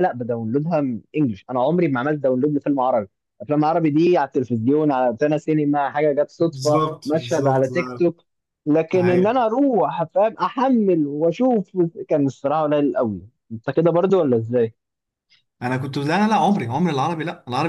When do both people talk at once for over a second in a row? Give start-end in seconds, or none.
6.4-8.0